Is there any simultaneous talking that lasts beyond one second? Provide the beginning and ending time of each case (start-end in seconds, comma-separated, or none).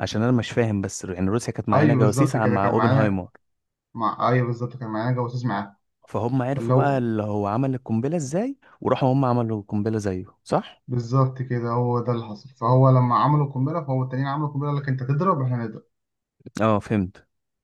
1.7-3.2